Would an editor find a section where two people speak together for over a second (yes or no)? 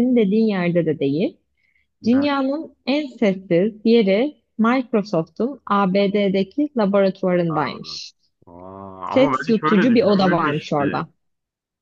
yes